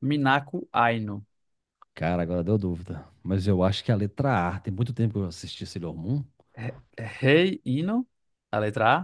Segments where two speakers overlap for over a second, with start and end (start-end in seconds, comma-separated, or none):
none